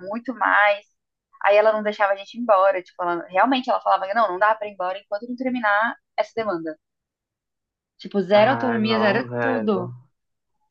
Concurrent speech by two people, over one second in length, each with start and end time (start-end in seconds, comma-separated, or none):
8.3-9.9